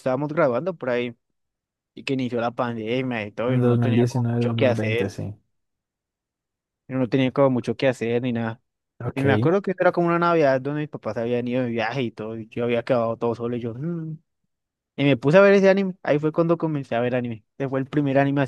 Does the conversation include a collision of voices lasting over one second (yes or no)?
yes